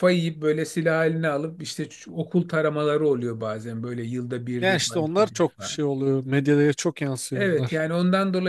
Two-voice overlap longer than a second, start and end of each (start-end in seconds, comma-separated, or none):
4.6-5.8